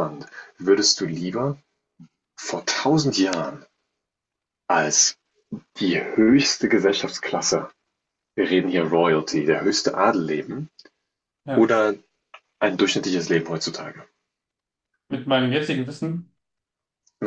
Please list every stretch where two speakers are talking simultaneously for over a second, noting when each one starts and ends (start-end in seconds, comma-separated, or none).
none